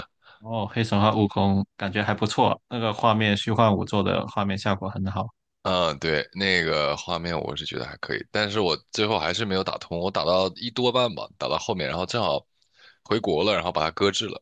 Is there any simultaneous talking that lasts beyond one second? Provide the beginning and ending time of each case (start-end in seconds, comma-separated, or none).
none